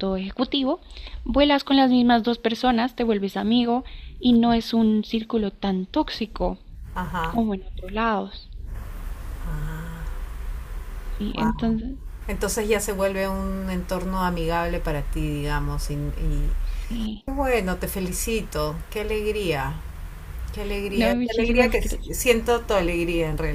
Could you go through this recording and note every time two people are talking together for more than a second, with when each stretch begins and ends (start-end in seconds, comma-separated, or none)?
20.9-22.1